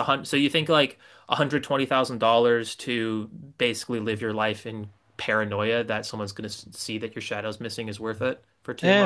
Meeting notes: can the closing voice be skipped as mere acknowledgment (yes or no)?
no